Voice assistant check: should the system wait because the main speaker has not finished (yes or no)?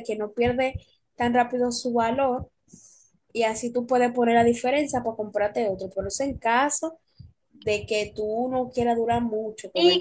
no